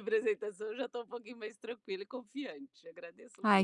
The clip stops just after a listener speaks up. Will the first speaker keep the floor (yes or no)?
no